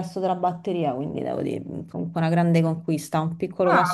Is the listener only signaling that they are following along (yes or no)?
no